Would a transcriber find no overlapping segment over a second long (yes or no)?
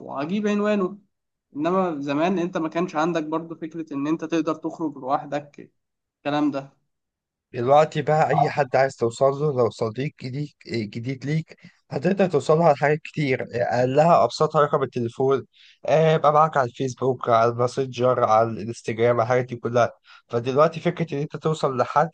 yes